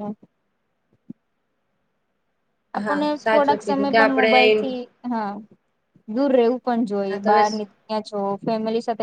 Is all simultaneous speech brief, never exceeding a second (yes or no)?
no